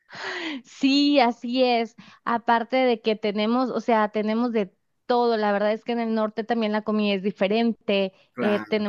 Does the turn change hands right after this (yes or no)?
no